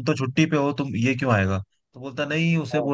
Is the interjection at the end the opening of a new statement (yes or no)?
no